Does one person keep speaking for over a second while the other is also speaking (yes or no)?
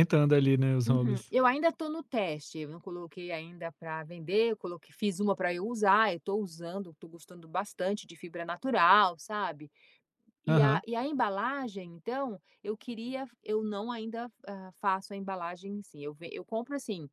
no